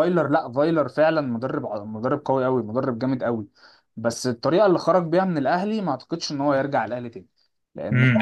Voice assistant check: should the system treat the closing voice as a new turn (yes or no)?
yes